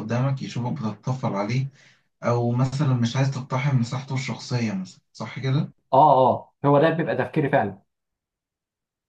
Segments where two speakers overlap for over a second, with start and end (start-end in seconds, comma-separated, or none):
none